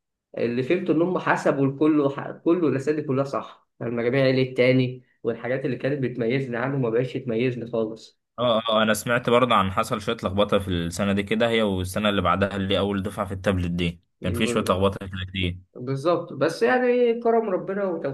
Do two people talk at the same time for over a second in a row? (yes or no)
no